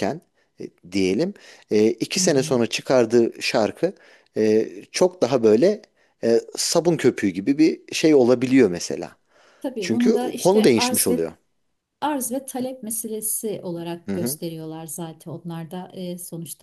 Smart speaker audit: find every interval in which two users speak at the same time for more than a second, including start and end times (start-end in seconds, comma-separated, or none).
9.8-11.3